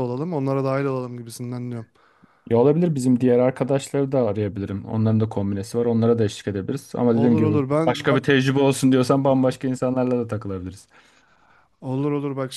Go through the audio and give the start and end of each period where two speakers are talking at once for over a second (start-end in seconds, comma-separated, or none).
7.0-8.3